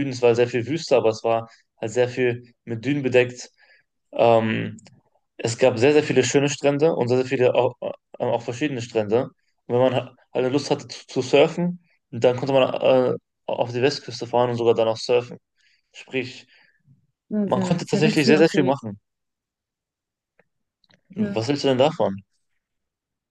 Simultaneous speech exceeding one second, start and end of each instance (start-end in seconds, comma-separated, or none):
17.4-18.8